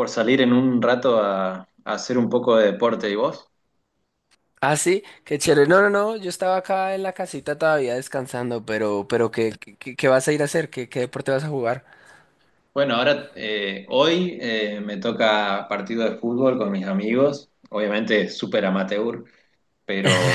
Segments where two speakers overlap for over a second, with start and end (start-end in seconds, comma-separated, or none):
none